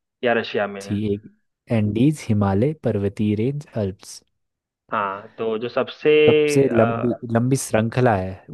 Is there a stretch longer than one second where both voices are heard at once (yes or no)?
no